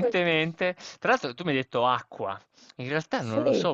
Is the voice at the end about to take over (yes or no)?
no